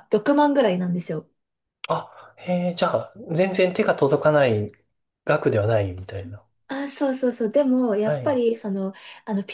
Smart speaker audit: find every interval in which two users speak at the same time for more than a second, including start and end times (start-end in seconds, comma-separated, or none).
none